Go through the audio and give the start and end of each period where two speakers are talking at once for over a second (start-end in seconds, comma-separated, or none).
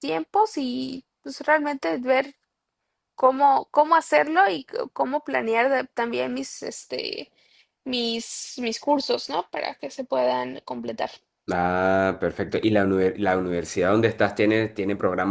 none